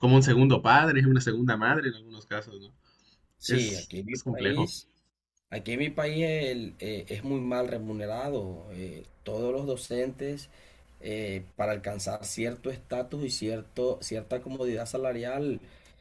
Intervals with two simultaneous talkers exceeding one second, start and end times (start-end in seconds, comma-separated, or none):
3.5-4.7